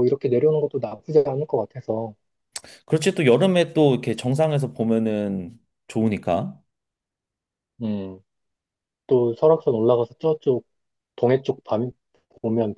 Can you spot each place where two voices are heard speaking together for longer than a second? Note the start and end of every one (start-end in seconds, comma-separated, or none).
none